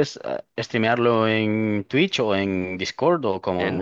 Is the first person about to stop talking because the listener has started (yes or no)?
yes